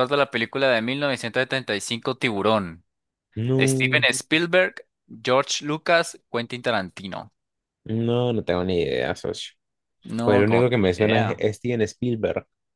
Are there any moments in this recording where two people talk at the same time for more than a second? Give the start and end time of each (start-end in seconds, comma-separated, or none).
10.2-11.4